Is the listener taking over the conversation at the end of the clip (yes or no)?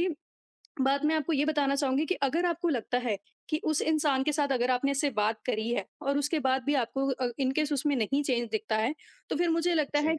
no